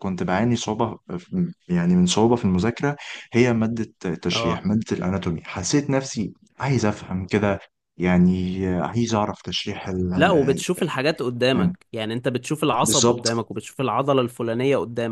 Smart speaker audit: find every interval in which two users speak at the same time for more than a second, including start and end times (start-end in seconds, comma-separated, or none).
none